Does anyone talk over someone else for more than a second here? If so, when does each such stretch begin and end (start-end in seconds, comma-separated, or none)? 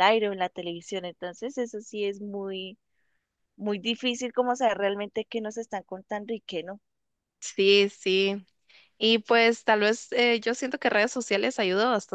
none